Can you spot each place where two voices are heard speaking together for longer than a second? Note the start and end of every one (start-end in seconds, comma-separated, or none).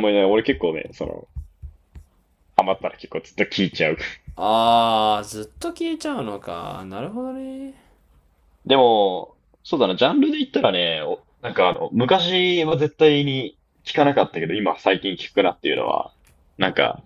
none